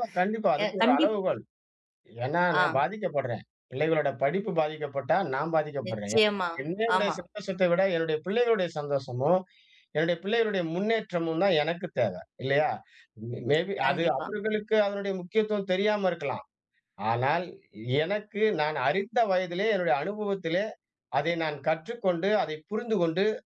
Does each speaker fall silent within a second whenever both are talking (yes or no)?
yes